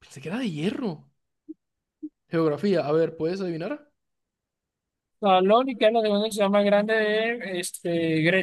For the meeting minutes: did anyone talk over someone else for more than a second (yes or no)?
no